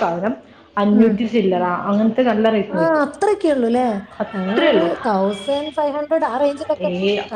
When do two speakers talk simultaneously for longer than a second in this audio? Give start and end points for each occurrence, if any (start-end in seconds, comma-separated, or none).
none